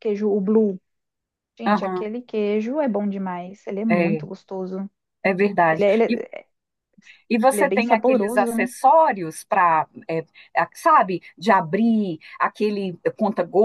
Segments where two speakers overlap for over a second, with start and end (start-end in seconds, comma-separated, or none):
7.5-8.7